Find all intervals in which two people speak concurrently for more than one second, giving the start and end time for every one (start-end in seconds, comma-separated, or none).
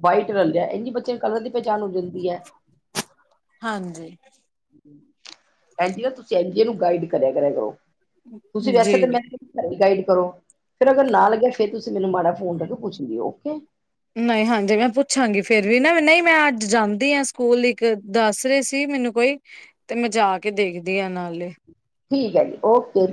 none